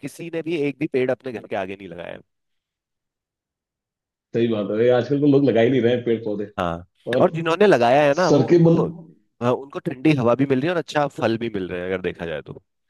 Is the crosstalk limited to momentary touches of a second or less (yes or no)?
yes